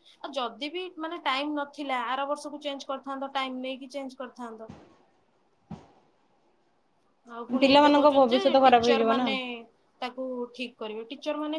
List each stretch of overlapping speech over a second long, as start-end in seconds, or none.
7.6-9.3